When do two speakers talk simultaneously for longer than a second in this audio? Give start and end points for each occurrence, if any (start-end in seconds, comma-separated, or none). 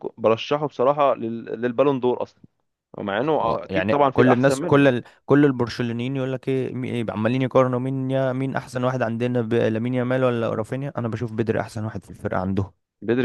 3.4-4.9